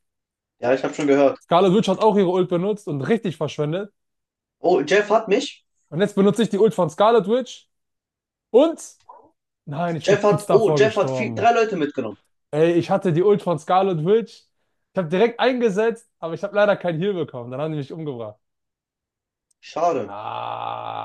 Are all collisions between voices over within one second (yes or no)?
no